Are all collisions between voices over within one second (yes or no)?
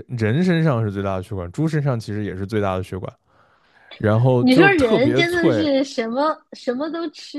no